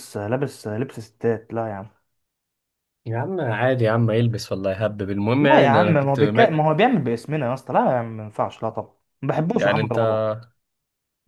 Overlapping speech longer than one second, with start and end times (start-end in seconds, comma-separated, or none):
5.4-6.6